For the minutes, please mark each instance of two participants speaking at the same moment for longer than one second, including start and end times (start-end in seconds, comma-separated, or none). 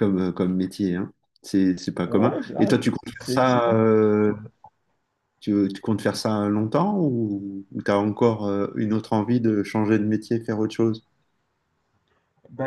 2.0-3.8